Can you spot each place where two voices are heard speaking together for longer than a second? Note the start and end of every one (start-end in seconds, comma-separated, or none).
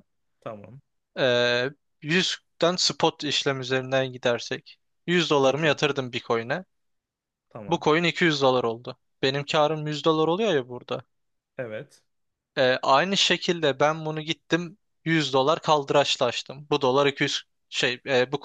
none